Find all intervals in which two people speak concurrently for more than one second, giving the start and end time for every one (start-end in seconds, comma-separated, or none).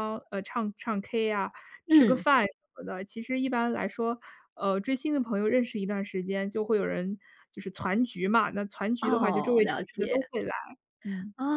9.0-10.3